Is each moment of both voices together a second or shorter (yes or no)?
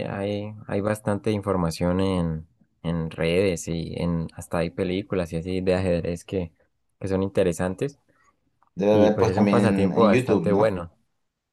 no